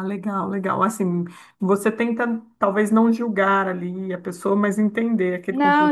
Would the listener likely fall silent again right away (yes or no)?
no